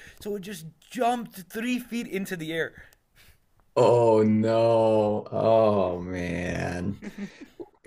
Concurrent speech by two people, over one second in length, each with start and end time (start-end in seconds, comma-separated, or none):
none